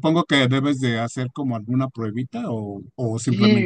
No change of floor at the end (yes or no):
no